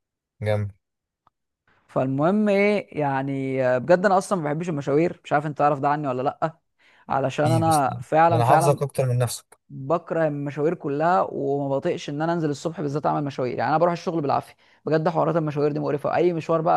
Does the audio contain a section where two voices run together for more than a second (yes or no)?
yes